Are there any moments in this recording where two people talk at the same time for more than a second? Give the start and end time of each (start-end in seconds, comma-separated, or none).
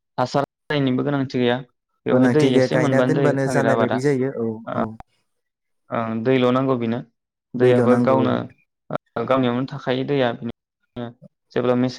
2.1-4.0